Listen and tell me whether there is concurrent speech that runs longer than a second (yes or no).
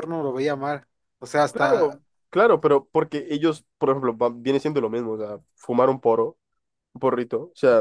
no